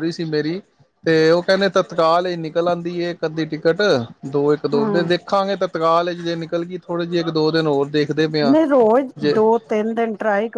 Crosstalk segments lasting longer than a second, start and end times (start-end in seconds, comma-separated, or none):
none